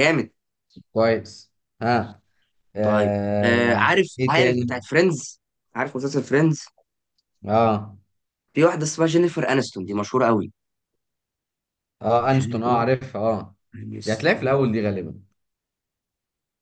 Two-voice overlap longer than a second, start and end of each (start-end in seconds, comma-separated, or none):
2.8-4.7